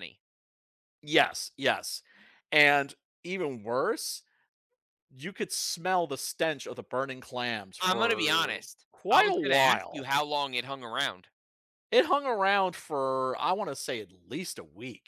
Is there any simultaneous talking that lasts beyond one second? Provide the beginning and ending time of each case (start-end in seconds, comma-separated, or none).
7.8-10.1